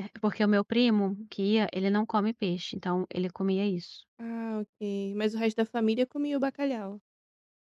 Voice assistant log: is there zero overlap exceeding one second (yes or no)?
yes